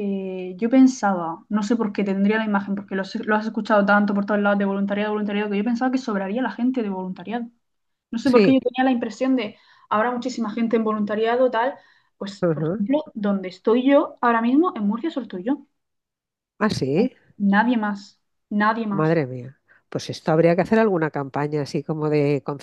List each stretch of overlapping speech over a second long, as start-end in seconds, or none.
none